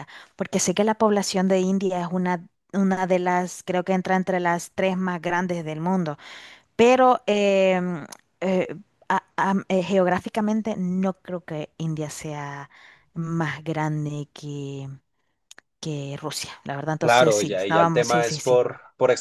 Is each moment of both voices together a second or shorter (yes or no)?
no